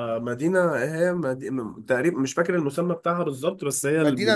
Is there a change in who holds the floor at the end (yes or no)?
no